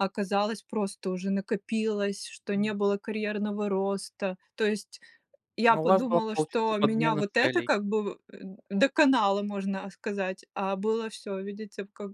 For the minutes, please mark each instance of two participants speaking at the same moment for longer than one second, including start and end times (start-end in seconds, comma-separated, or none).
5.7-7.7